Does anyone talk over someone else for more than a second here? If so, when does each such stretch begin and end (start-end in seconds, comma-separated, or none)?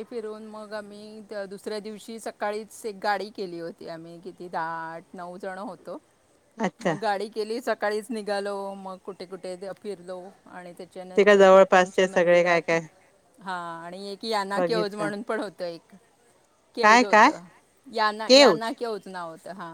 none